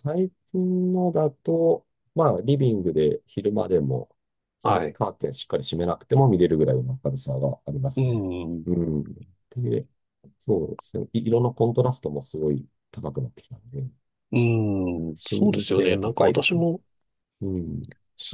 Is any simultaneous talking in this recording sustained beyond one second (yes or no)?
yes